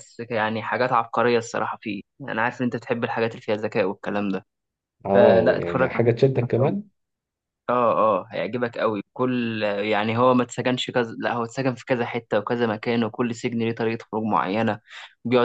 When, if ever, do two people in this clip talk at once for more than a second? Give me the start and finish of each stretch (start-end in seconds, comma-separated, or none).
5.1-6.8